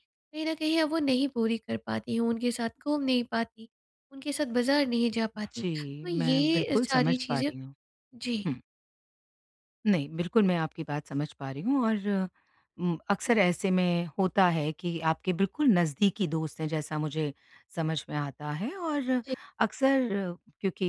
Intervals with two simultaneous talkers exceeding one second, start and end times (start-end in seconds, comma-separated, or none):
5.5-7.5